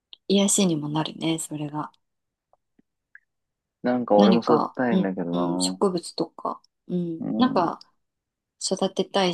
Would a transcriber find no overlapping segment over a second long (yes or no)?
no